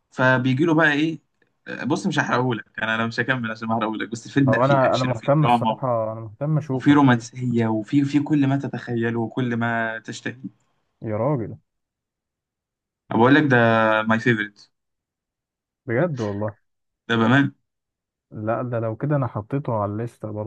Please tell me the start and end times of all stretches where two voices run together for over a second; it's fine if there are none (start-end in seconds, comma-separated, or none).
4.5-5.8